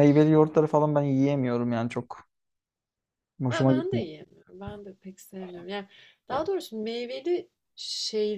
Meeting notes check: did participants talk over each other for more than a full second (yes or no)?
no